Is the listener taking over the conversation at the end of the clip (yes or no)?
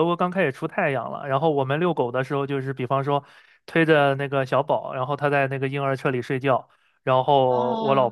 no